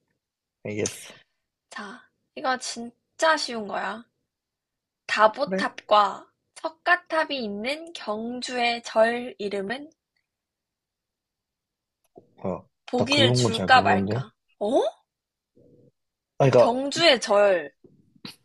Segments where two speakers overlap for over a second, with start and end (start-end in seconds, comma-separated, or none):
12.8-14.3